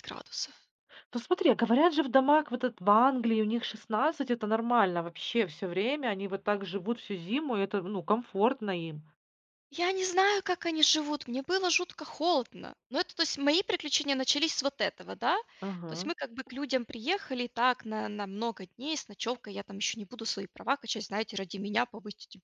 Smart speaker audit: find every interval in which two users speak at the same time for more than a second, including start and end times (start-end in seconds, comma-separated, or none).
none